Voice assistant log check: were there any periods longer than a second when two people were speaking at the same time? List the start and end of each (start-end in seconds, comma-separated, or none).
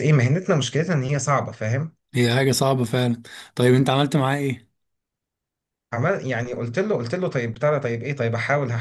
none